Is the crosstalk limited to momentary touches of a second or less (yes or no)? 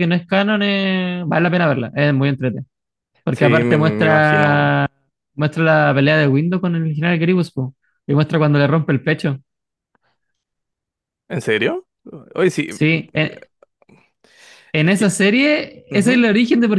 no